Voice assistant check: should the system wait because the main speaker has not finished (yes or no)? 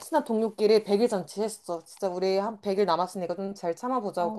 no